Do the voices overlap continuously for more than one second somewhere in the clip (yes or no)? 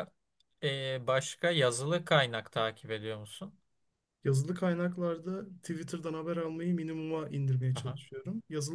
no